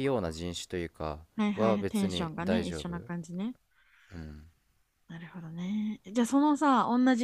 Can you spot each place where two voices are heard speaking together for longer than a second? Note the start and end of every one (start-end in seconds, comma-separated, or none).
1.6-2.9